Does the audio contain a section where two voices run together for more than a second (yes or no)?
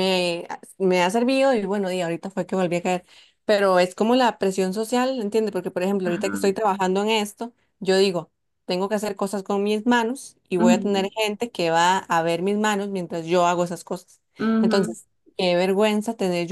no